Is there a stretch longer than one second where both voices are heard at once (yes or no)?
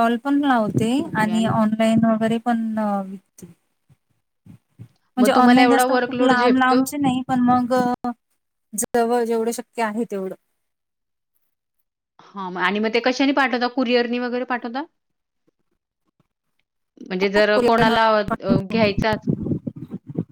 yes